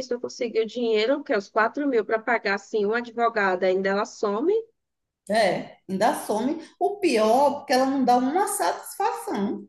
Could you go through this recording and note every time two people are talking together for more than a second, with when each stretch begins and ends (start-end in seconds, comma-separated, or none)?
none